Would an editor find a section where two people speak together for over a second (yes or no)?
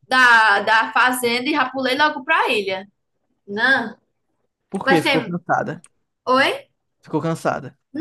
no